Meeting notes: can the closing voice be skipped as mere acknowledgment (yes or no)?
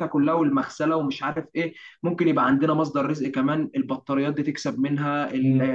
no